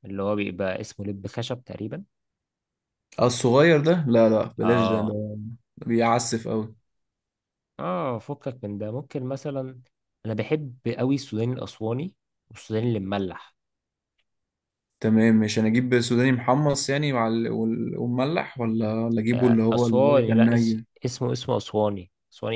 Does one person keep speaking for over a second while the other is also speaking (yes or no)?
yes